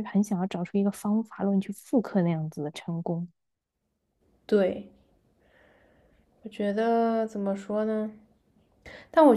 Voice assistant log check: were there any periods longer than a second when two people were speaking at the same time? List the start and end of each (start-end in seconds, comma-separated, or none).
none